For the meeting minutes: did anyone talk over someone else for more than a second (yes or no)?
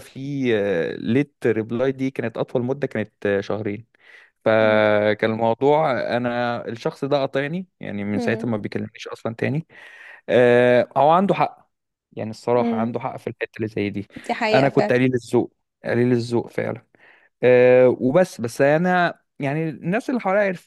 no